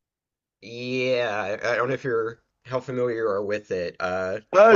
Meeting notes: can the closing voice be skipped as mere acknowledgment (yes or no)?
no